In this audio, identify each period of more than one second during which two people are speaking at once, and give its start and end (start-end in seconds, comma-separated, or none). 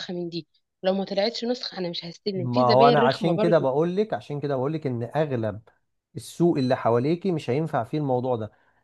2.4-3.6